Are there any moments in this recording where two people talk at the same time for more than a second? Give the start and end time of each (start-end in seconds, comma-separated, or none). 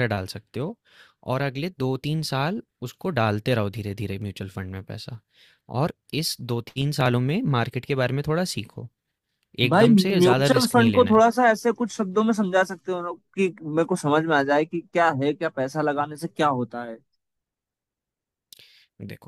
9.7-11.2